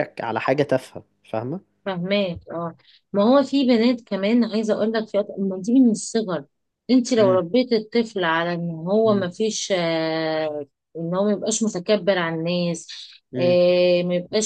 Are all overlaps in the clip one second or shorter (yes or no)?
yes